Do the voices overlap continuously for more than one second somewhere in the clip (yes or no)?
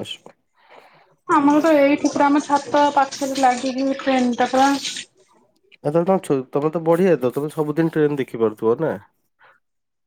no